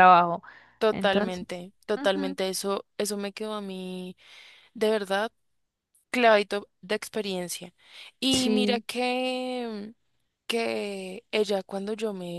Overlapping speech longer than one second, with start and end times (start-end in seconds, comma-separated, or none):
0.9-2.4